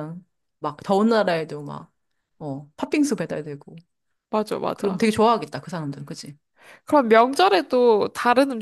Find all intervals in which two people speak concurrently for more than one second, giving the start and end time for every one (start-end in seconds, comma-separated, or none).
none